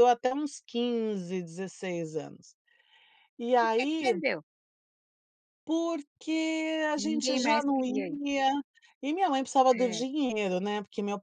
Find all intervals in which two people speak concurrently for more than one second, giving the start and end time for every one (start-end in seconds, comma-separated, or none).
7.0-8.2